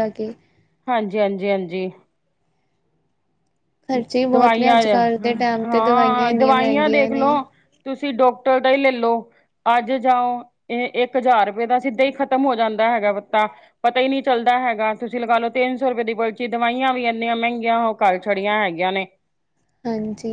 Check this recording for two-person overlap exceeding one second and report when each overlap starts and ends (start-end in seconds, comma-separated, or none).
5.6-7.3